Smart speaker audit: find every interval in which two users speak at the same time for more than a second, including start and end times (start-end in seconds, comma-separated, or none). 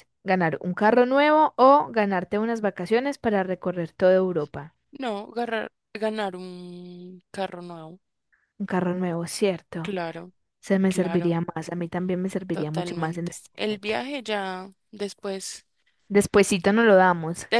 12.5-13.9